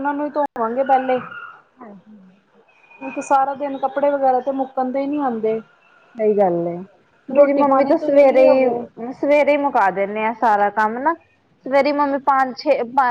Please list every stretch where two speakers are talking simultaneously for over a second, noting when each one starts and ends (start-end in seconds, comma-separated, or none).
7.3-8.8